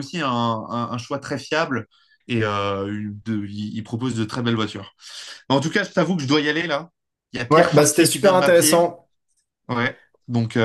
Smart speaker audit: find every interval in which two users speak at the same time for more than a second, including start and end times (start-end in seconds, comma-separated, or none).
7.5-8.9